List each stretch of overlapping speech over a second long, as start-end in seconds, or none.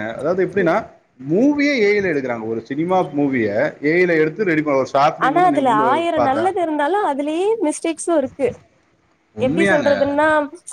none